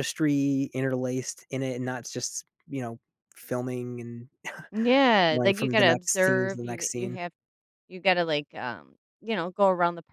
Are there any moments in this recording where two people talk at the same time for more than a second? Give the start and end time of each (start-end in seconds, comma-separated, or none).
5.3-7.2